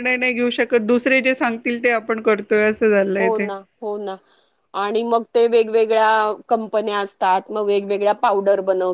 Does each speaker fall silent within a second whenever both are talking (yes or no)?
yes